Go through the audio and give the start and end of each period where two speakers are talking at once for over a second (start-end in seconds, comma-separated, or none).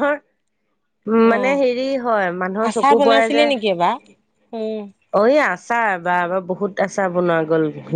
1.3-3.4